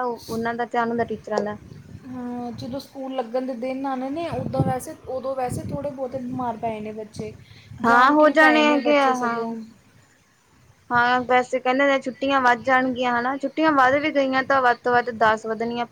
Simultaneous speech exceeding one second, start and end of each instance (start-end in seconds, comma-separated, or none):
7.8-9.4